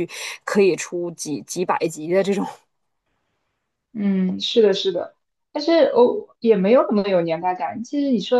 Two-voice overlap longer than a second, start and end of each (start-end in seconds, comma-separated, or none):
none